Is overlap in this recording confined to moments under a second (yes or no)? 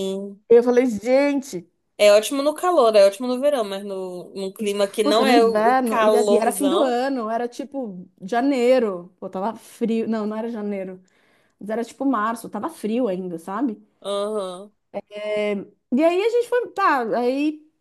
no